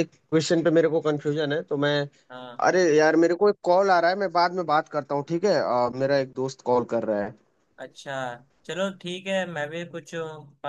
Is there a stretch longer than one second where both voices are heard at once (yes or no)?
no